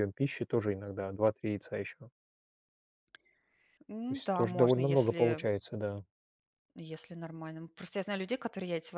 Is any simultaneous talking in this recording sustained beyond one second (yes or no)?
yes